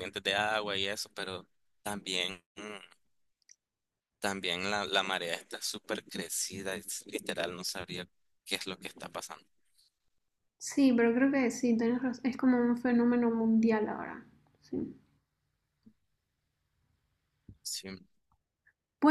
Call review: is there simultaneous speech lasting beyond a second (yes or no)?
no